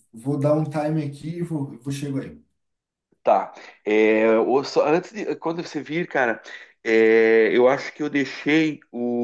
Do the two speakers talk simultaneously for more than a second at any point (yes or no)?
no